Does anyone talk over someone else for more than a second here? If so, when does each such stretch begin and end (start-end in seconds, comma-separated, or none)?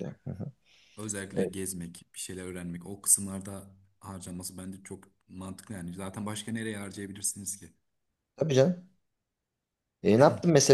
none